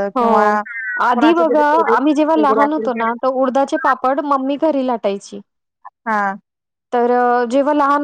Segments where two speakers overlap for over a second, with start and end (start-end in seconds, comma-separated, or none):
1.4-2.9